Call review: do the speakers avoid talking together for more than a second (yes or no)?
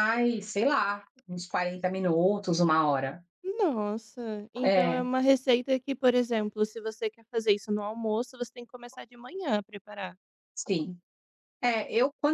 yes